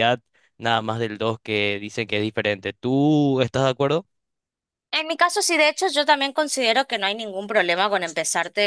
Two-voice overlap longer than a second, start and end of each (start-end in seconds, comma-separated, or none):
none